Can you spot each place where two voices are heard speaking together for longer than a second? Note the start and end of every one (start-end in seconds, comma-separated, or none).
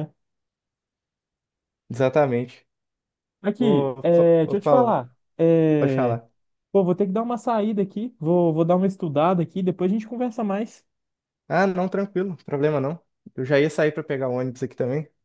3.6-5.0